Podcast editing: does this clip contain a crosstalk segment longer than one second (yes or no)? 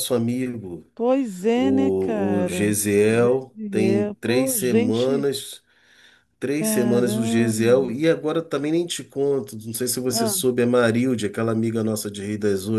yes